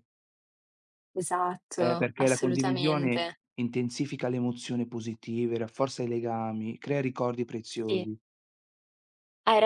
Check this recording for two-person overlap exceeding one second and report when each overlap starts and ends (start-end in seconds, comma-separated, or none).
1.8-3.4